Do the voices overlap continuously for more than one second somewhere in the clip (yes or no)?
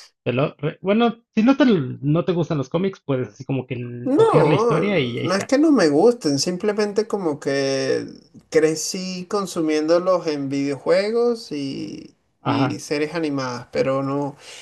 yes